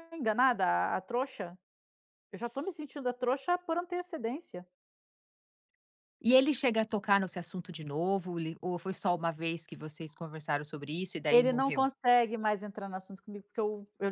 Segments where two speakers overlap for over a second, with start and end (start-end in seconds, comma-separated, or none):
none